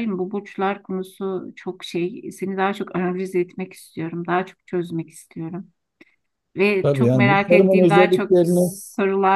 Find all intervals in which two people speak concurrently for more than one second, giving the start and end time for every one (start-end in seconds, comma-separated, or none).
6.8-8.8